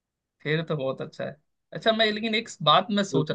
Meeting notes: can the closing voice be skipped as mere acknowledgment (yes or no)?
yes